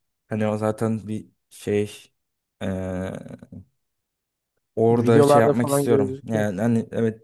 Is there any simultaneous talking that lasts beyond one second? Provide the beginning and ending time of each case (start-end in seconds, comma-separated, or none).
4.9-6.5